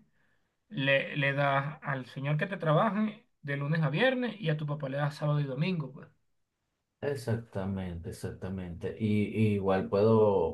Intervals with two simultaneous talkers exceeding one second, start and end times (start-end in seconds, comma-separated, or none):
none